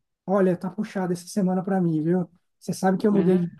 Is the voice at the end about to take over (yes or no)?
no